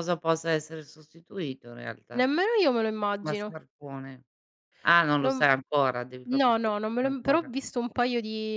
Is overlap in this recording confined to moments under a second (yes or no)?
no